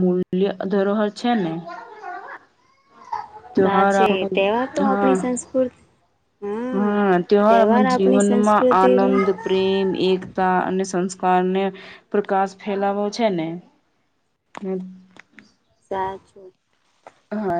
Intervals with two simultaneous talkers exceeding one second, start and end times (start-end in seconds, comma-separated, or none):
7.9-9.2